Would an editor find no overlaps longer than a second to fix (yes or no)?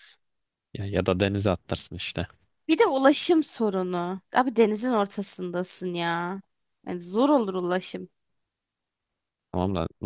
yes